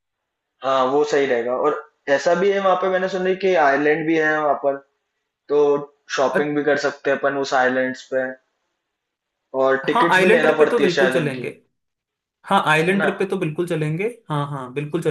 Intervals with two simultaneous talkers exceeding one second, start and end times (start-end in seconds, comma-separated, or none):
9.9-11.5